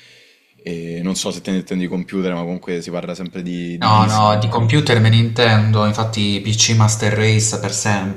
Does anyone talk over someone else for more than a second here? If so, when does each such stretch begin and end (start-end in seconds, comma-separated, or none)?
3.8-5.0